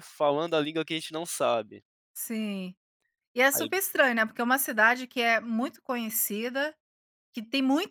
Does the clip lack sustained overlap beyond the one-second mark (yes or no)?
yes